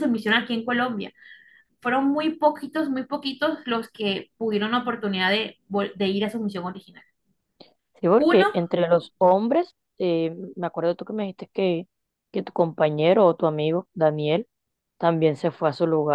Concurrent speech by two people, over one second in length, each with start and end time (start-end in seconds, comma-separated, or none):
none